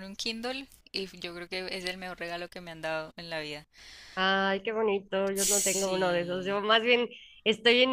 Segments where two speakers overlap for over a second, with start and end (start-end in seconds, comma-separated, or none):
5.3-6.6